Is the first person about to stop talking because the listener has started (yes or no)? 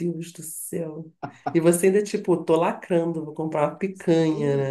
yes